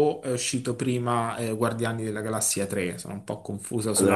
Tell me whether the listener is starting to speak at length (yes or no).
yes